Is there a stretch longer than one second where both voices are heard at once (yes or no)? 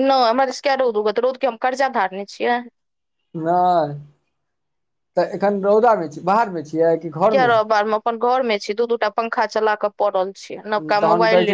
no